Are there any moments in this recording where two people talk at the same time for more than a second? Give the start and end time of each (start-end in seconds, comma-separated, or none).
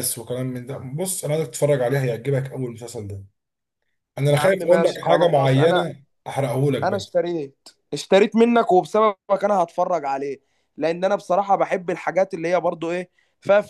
4.3-5.9